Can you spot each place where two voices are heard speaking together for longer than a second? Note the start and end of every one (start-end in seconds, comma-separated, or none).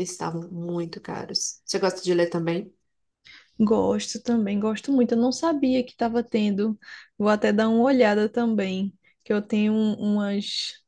none